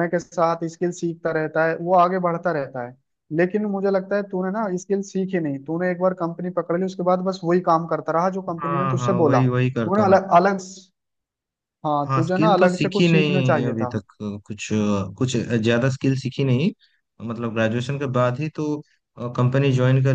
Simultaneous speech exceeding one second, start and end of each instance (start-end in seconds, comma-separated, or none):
8.6-10.0, 12.0-13.9